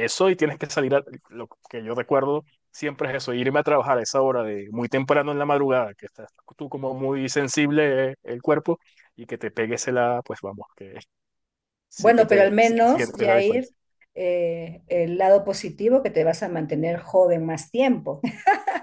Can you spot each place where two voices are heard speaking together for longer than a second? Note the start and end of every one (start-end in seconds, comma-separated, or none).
12.0-13.7